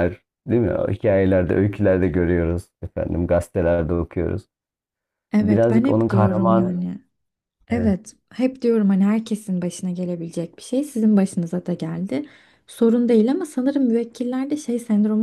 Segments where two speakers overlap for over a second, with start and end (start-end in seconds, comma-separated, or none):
5.4-6.8